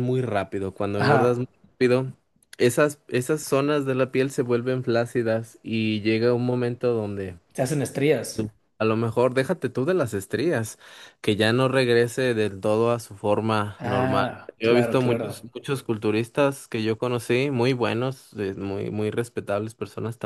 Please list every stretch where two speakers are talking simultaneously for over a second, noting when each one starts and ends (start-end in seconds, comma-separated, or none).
13.8-15.5